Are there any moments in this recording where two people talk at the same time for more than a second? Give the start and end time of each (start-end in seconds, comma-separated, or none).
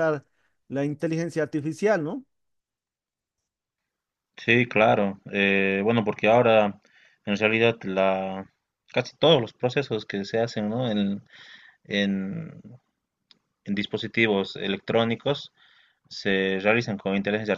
none